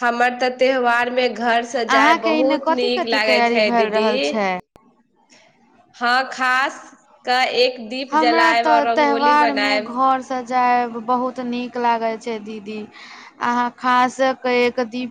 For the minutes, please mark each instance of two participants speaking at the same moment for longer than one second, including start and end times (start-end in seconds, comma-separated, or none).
2.0-4.1, 8.1-10.0